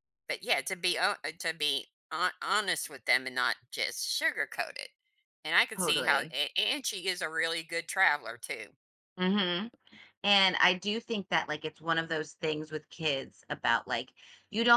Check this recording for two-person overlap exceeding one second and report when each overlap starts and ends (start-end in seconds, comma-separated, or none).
none